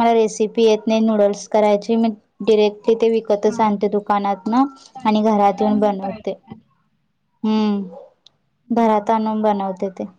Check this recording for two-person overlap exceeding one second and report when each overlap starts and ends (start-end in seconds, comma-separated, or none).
5.0-6.4